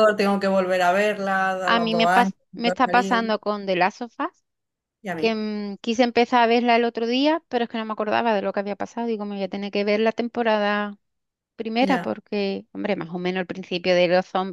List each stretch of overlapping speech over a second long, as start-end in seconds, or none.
1.6-3.2